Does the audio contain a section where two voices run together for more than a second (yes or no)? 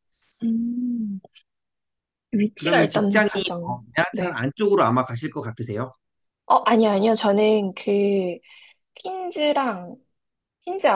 yes